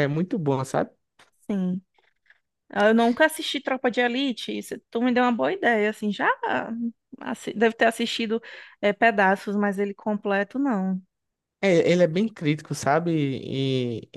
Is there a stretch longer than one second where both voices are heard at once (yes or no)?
no